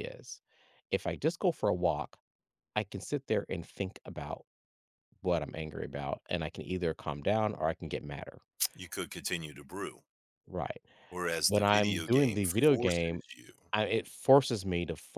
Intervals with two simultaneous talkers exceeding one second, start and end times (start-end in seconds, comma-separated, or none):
11.5-13.2